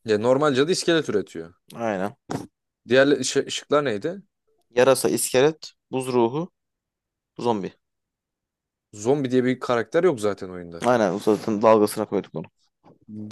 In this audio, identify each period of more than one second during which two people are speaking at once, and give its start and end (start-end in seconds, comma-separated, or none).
none